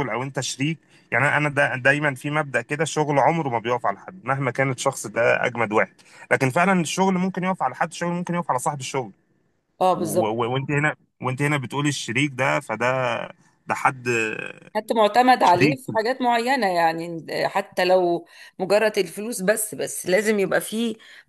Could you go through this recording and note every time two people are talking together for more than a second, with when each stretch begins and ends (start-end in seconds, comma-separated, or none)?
none